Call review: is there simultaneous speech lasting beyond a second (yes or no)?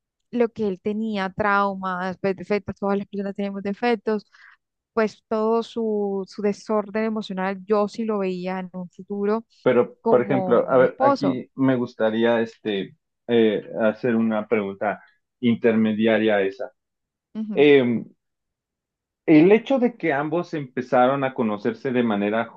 yes